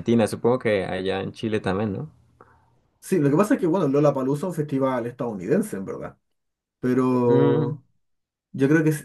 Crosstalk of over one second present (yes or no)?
no